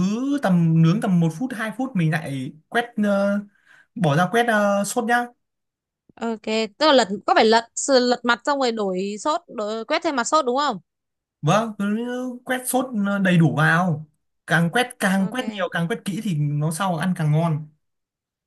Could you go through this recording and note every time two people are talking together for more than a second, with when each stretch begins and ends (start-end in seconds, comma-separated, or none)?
none